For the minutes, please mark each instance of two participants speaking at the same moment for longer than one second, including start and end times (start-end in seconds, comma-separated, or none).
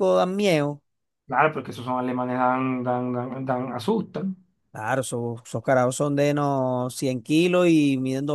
none